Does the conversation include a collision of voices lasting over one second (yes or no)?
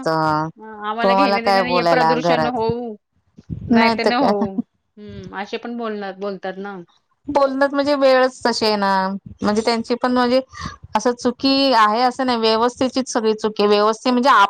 yes